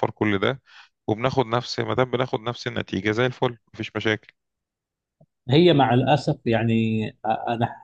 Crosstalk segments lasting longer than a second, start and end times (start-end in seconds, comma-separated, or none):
none